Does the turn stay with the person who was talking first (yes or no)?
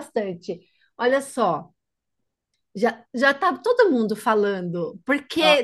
yes